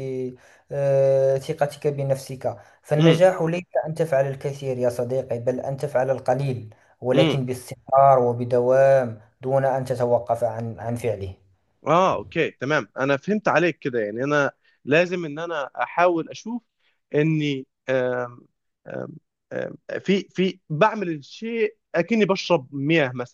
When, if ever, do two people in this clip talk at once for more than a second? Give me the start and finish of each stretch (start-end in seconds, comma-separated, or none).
none